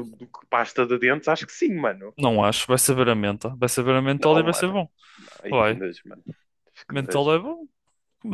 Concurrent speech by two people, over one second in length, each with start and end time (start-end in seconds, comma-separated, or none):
none